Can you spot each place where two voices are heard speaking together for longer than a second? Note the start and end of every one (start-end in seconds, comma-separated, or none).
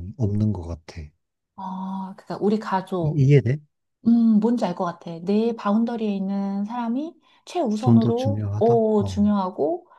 7.8-9.2